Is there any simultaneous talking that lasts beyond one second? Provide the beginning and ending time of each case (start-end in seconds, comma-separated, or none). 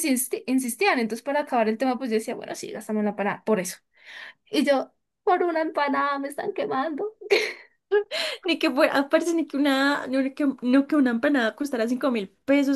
none